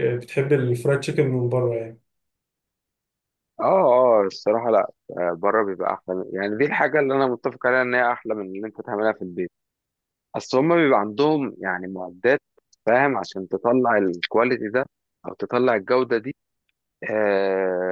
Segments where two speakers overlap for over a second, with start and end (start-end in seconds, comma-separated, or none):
none